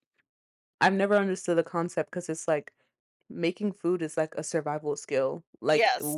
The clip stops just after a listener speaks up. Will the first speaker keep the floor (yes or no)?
yes